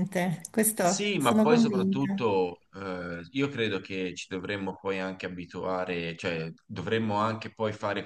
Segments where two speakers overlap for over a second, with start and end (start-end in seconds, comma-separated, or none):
0.8-2.3